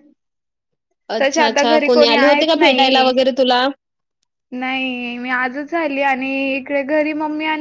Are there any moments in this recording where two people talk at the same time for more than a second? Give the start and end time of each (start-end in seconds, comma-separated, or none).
1.2-3.1